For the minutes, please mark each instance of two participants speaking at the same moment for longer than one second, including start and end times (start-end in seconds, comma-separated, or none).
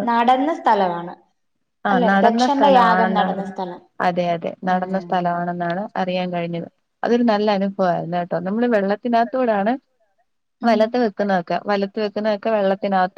1.9-3.5